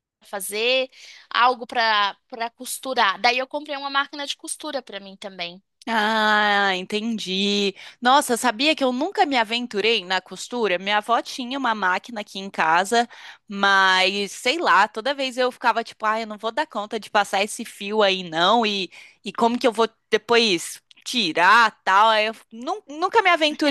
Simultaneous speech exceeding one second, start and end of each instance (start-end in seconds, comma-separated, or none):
none